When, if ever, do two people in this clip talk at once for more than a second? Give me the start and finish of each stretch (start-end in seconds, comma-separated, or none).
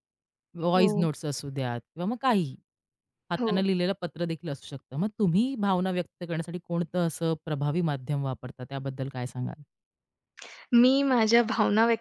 none